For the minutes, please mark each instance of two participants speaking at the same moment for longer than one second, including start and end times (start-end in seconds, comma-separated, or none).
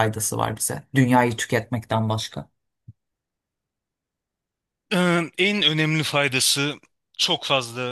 none